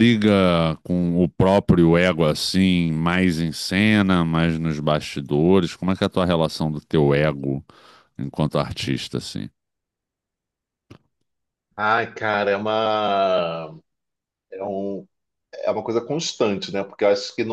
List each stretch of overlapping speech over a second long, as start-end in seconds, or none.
none